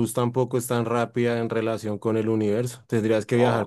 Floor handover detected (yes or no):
no